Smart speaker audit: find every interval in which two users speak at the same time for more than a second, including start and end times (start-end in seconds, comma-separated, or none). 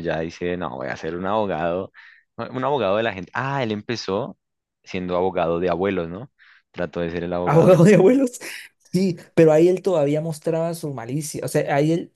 none